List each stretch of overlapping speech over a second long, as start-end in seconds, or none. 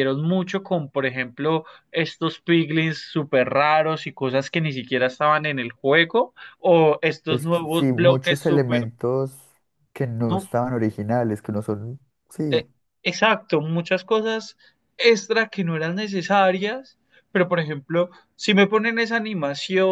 7.3-8.9